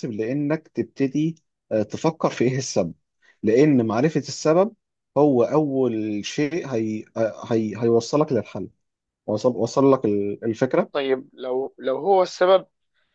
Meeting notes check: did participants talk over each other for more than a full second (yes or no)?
no